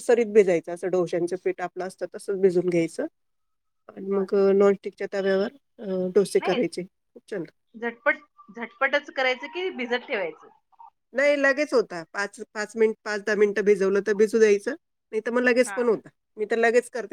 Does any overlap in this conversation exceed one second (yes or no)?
no